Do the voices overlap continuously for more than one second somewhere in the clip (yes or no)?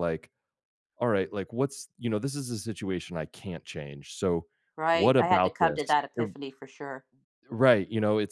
yes